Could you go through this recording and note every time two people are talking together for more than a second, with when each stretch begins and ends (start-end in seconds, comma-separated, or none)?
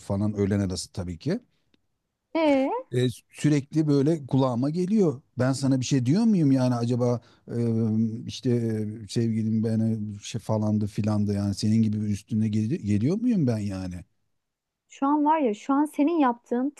none